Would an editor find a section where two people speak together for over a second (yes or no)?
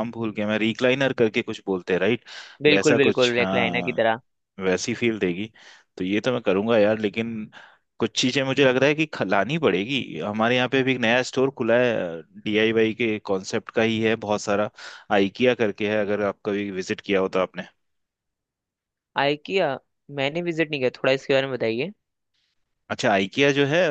yes